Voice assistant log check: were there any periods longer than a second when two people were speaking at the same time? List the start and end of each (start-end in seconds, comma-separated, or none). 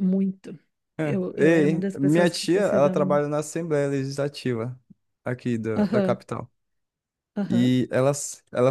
1.0-3.3